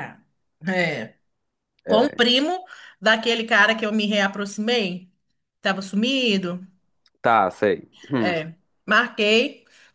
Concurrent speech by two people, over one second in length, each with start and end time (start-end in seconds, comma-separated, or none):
none